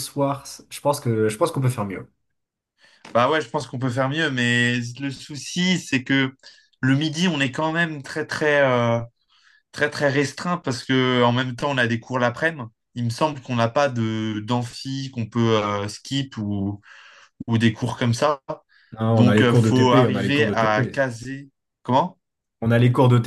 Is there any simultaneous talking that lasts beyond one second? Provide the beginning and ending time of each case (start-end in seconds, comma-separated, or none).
19.1-20.9